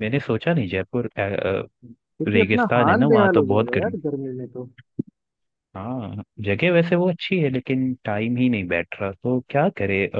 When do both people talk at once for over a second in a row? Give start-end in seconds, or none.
2.3-4.0